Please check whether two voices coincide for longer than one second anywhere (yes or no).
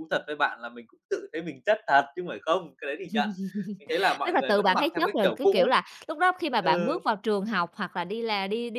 yes